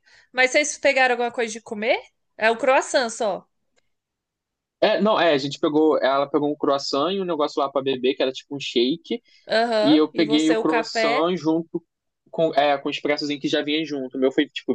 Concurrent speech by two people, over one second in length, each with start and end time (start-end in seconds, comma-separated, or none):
9.8-11.3